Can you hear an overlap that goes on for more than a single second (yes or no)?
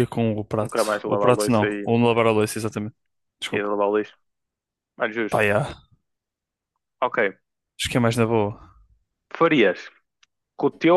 yes